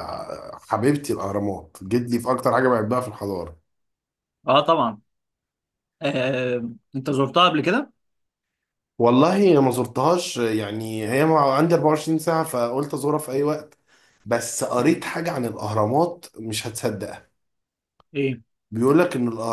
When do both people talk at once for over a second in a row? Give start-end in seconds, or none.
none